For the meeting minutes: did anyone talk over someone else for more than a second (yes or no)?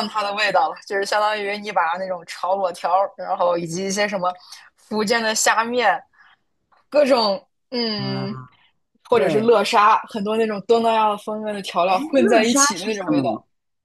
yes